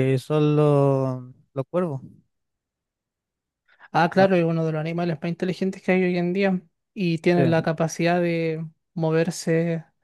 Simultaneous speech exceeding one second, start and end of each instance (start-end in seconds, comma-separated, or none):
none